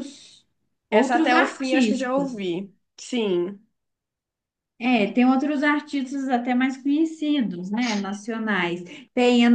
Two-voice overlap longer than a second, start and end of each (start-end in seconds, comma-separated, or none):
0.9-2.5